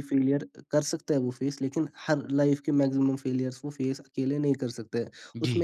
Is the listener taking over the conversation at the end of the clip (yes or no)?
no